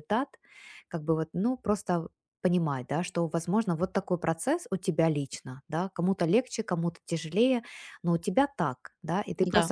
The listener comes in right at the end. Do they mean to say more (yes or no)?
no